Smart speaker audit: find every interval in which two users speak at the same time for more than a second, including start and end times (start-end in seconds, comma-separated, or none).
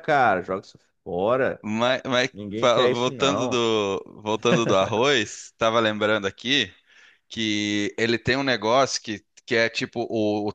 2.3-3.6